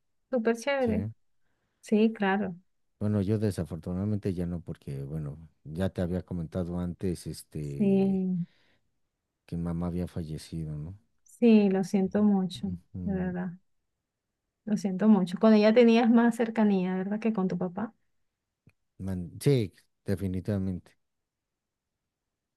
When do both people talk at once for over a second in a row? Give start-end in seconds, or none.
none